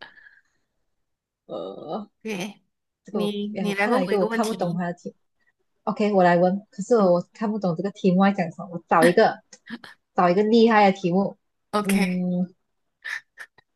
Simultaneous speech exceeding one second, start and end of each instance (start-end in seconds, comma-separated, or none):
3.1-4.8